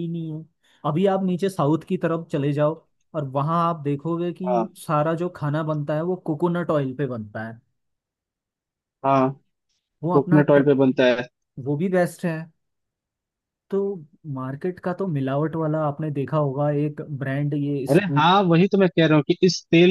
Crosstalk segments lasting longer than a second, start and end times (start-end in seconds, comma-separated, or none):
none